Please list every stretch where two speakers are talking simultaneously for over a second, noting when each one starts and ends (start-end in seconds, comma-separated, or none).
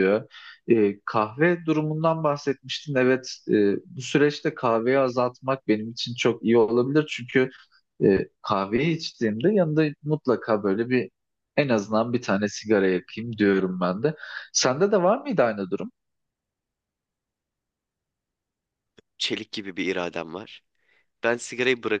none